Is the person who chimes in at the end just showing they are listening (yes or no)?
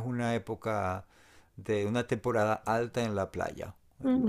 no